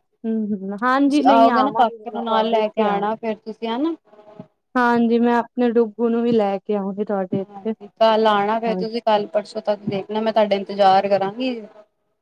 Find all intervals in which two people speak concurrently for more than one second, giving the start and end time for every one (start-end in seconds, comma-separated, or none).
0.9-3.0